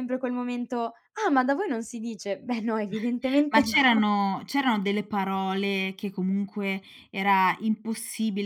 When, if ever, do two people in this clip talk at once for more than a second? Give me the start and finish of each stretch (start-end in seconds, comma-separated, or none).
none